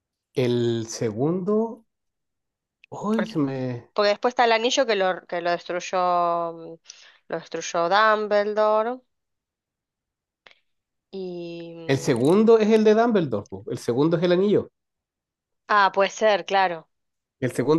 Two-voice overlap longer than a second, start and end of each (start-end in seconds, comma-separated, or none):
none